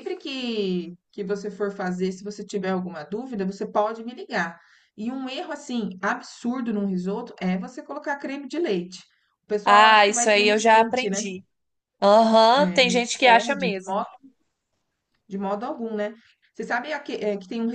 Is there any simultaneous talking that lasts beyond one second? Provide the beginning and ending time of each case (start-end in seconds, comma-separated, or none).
9.6-11.3, 12.5-14.1